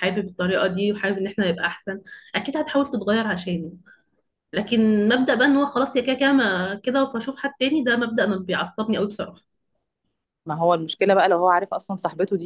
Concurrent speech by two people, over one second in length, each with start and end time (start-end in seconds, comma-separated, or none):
none